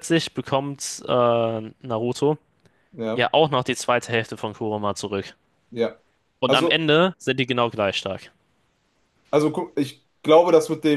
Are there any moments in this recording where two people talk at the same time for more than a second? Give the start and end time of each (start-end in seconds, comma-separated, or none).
none